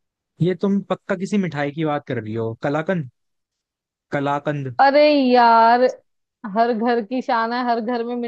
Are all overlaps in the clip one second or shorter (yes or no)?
yes